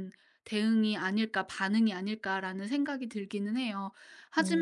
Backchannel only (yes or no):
yes